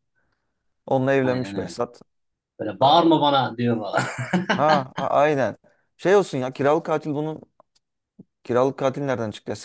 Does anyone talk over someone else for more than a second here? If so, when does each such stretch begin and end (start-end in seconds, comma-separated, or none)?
none